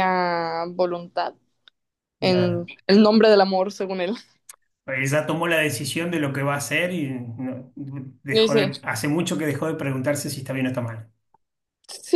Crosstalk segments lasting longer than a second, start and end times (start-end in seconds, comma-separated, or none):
none